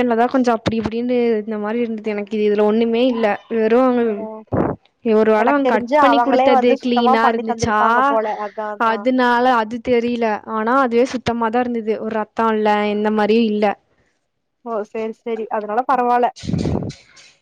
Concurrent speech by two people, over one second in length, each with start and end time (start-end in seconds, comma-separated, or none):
5.4-7.8